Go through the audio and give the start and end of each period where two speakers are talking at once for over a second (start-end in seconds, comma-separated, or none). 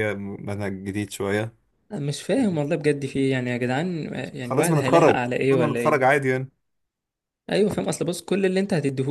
4.4-6.2